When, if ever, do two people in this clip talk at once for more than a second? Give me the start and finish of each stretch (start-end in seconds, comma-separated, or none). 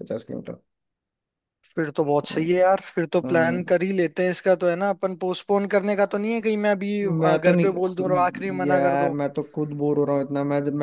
7.2-9.2